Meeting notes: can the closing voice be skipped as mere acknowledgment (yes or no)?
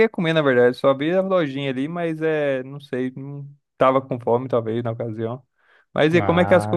yes